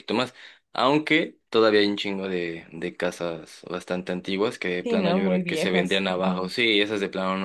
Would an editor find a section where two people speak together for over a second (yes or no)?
yes